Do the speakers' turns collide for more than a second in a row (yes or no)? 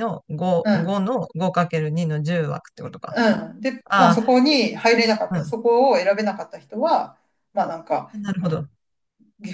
no